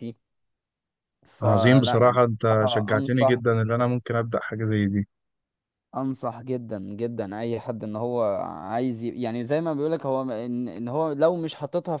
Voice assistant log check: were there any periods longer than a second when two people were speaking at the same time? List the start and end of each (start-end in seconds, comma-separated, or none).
1.4-3.4